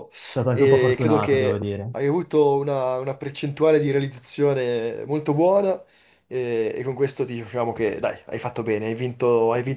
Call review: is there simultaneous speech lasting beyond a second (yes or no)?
yes